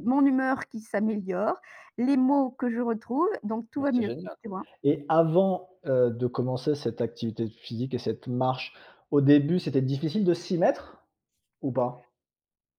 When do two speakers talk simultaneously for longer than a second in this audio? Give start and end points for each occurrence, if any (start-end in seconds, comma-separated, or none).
none